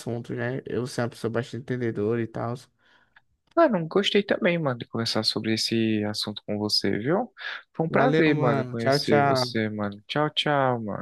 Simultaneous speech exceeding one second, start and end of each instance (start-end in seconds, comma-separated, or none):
7.9-9.6